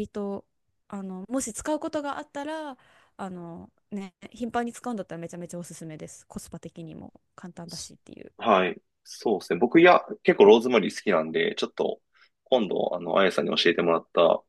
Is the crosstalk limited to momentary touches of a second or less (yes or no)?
yes